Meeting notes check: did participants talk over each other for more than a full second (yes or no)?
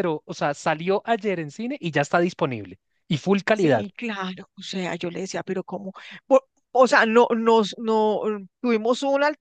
no